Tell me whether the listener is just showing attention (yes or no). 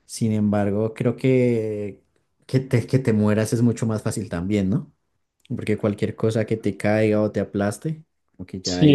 no